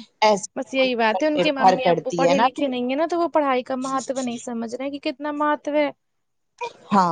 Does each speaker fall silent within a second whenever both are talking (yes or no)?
no